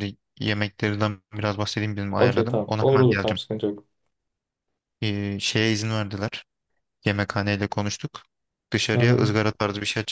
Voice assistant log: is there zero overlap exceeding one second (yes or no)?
no